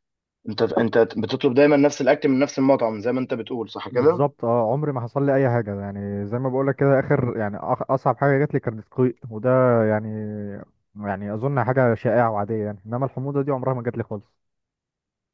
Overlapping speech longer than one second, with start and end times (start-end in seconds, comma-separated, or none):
none